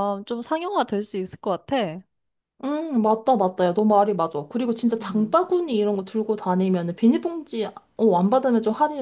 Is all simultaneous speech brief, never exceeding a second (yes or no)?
yes